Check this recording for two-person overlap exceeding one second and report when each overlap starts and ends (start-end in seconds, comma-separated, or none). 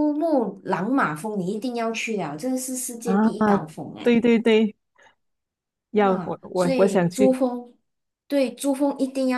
5.9-7.4